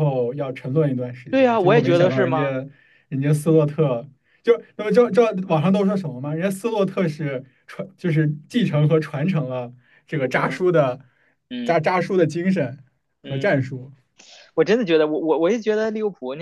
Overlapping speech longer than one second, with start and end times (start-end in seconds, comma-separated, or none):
1.3-2.5